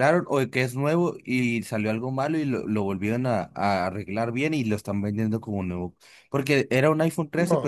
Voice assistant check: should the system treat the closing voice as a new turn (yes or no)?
no